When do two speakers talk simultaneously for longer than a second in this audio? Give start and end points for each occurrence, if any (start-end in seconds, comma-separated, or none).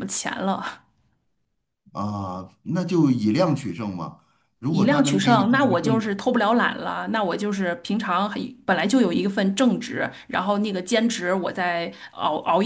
4.7-6.2